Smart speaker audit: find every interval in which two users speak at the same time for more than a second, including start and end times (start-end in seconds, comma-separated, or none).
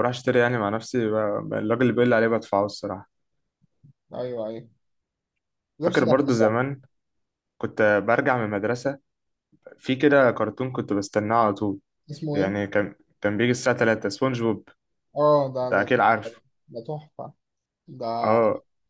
none